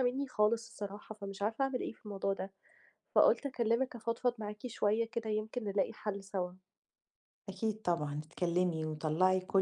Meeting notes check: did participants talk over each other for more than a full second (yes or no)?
no